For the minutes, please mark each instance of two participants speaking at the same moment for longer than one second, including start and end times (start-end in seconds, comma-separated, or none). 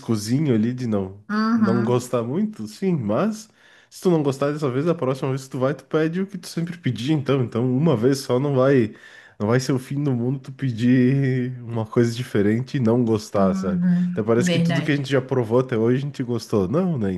13.3-15.1